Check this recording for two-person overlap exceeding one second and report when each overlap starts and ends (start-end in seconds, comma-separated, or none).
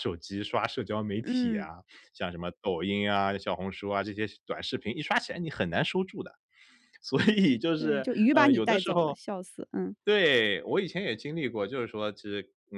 7.8-9.2